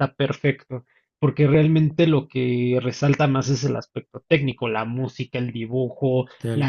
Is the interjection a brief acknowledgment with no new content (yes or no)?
yes